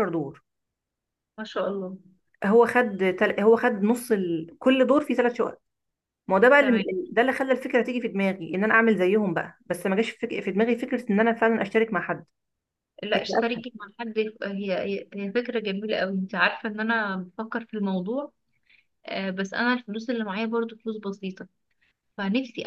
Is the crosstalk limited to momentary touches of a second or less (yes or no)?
yes